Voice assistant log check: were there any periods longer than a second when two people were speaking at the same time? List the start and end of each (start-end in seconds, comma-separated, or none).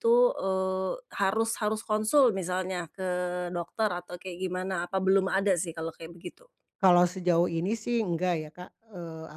none